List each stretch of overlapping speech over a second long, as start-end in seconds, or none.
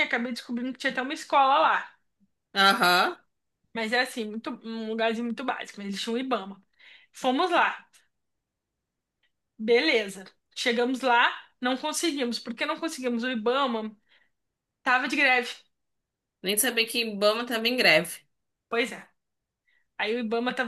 none